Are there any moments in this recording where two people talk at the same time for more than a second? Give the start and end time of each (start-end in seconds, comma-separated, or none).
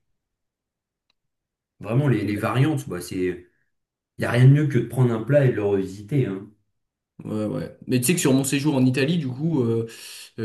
none